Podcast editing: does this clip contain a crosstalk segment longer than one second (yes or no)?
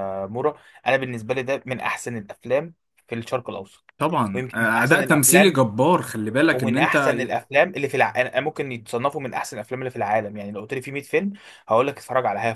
yes